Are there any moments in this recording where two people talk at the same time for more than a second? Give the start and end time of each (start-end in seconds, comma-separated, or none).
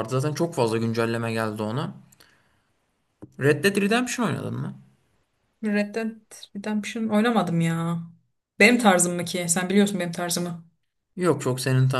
none